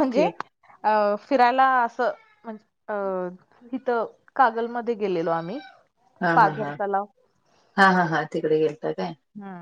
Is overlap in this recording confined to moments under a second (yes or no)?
yes